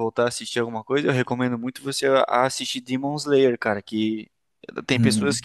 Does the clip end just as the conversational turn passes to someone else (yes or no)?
no